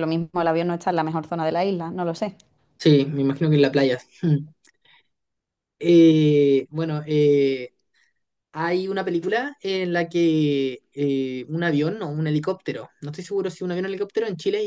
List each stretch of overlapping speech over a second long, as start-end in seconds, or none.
none